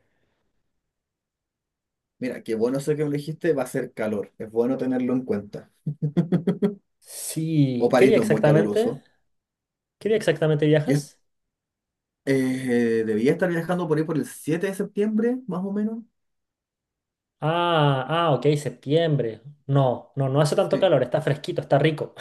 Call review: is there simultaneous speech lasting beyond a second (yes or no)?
yes